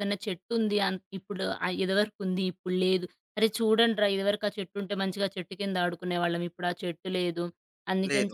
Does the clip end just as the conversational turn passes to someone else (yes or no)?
no